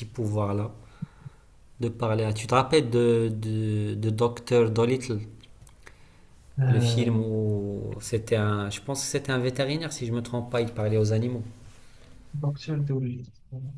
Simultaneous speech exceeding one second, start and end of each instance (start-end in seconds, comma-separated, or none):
none